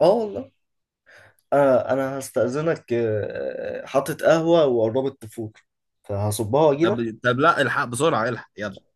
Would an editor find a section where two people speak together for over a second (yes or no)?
no